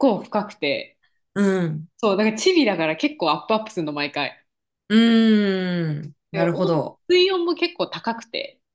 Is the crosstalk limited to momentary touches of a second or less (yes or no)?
yes